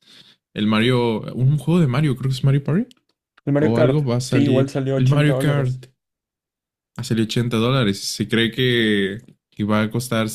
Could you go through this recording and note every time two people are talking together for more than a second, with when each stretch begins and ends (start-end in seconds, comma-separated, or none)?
3.6-5.8